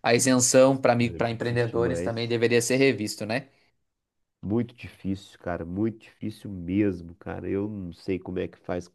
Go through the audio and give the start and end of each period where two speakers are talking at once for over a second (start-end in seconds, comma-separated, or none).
1.1-2.4